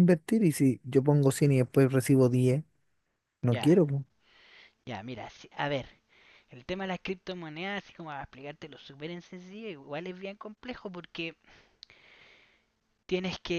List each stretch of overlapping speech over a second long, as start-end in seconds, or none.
none